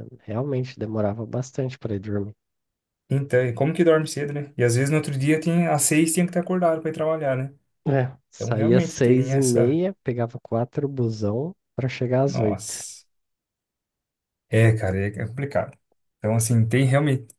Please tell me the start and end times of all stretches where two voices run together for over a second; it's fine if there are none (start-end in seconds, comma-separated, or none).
8.3-9.8